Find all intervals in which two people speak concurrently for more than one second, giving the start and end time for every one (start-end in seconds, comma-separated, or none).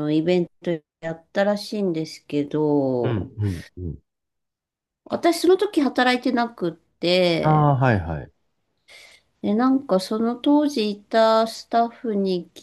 none